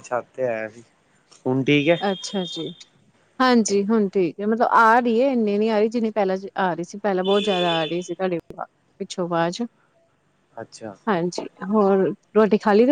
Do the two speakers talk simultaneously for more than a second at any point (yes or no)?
no